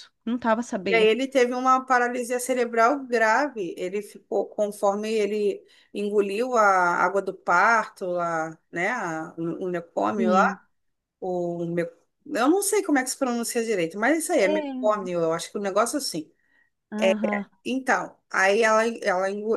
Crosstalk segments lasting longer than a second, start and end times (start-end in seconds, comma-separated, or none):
none